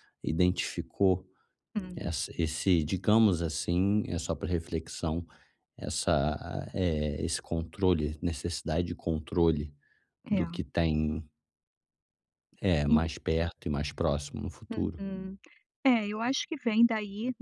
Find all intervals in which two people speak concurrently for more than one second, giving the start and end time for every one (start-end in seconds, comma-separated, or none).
none